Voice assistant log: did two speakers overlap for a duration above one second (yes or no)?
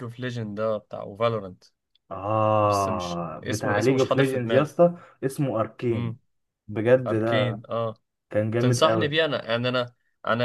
yes